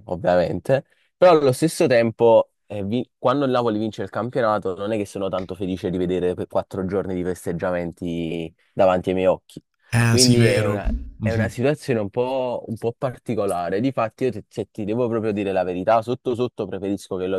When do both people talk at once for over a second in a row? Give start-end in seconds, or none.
10.1-11.6